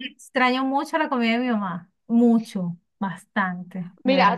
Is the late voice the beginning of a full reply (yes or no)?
yes